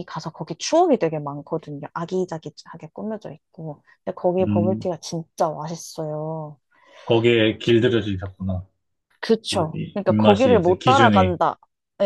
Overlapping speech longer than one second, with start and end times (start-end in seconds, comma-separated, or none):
9.5-11.4